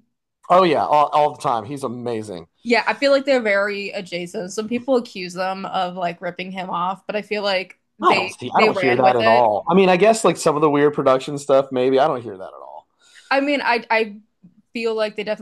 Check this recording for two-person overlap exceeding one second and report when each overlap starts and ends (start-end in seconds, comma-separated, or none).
8.0-9.4